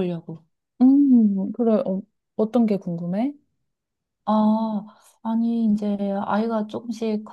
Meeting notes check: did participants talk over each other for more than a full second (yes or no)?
no